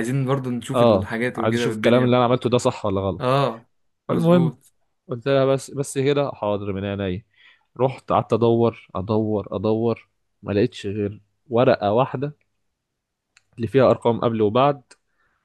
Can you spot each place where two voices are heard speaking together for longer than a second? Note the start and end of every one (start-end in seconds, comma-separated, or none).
0.8-2.2